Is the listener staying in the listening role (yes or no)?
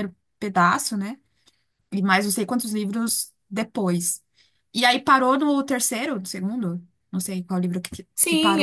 no